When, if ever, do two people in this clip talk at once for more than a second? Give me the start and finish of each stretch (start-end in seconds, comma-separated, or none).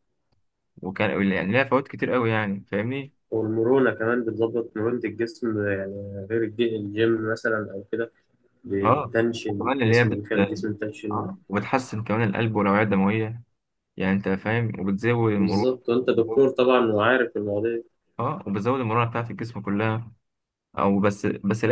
8.8-10.3